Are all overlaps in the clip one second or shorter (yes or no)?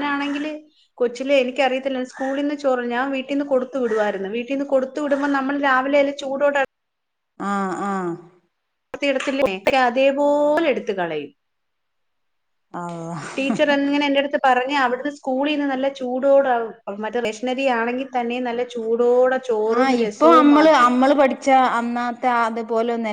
yes